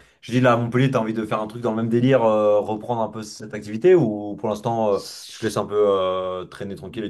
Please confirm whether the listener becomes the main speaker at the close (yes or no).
yes